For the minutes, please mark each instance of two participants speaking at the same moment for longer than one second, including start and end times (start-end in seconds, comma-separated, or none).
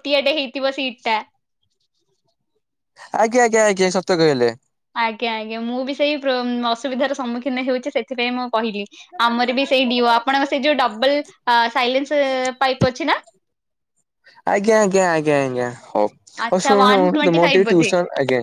16.5-17.9